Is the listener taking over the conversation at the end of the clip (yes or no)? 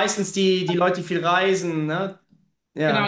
yes